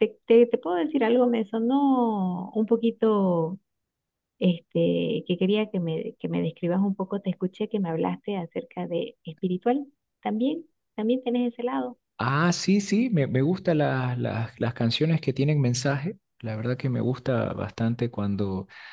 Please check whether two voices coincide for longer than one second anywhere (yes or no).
no